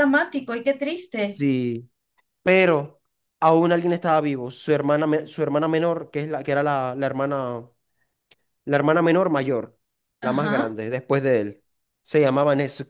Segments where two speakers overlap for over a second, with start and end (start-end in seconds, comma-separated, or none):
none